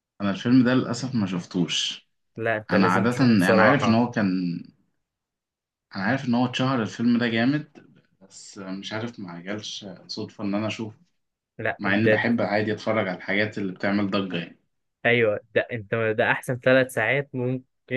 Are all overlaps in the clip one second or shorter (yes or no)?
no